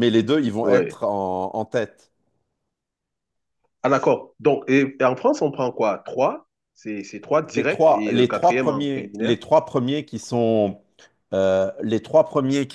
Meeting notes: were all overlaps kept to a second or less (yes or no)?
no